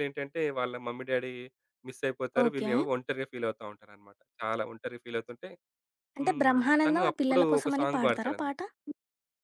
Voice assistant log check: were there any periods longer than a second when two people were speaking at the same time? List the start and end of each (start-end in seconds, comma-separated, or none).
6.2-8.6